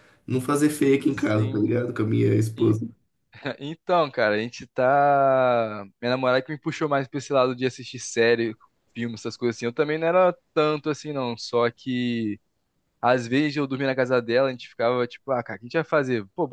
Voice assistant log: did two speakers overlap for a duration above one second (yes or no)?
no